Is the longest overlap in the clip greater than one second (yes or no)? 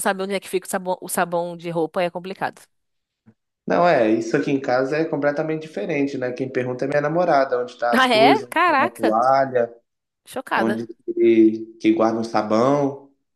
yes